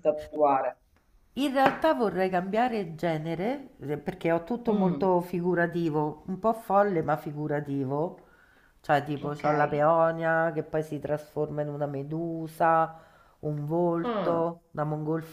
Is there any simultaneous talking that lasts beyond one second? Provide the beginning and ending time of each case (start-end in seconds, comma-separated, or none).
none